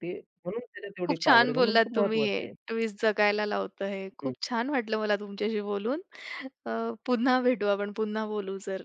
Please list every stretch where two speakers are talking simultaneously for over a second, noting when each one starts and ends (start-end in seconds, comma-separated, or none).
1.1-2.5